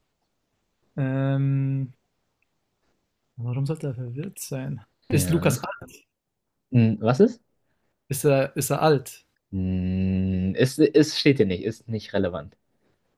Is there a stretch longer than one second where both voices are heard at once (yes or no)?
no